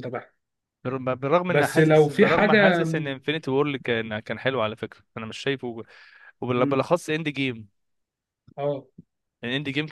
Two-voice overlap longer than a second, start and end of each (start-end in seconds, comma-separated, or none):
1.5-2.8